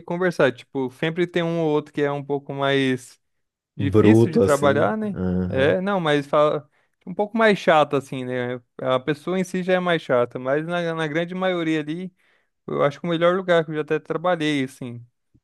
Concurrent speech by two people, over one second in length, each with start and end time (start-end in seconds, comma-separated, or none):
3.8-5.8